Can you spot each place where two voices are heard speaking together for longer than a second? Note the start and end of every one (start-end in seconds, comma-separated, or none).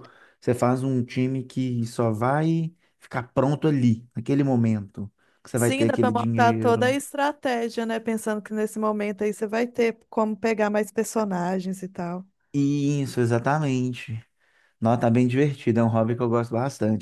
5.6-7.0